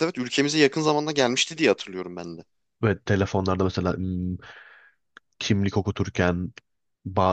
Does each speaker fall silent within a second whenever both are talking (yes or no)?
yes